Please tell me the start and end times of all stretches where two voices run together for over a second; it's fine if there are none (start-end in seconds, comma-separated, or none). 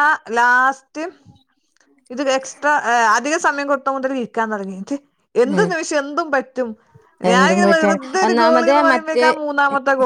7.3-9.2